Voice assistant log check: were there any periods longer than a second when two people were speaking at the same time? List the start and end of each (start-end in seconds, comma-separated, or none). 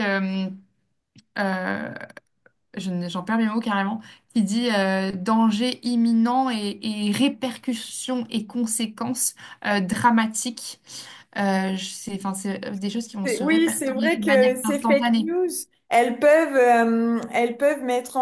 13.2-15.3